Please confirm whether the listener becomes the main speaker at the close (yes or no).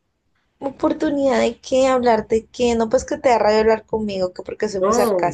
yes